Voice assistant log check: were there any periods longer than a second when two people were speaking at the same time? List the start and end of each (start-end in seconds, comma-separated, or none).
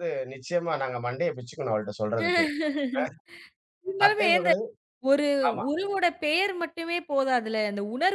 none